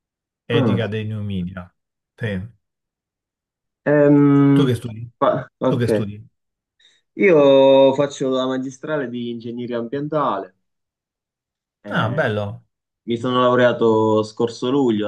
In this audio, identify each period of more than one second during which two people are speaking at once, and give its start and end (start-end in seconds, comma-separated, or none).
none